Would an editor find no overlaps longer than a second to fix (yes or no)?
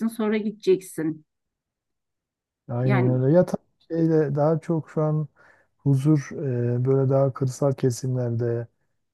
yes